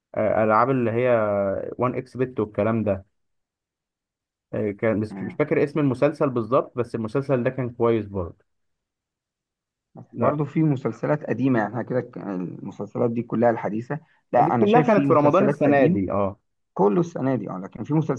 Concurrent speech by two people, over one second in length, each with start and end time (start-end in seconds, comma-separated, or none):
14.4-16.0